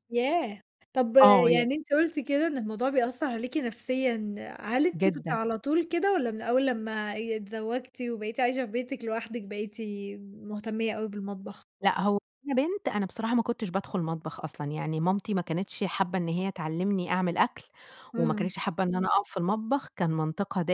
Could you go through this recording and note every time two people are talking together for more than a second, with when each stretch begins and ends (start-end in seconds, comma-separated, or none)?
none